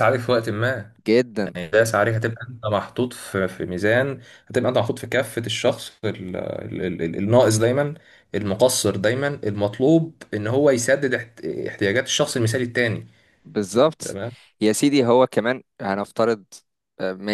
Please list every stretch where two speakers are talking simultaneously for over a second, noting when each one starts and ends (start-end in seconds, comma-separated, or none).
none